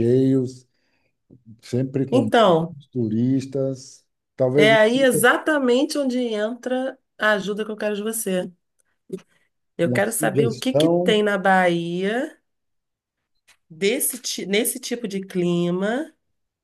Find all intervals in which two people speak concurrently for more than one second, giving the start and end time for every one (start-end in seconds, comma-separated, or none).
9.8-11.2